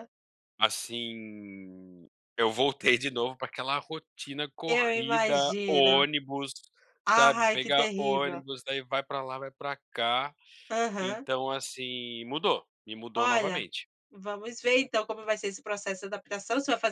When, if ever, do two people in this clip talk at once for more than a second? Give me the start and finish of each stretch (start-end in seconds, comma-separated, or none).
4.7-6.1, 7.1-8.4